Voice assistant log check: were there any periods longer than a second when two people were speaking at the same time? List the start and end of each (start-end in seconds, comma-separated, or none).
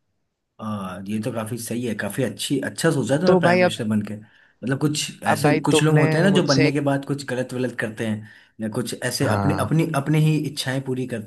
5.3-6.8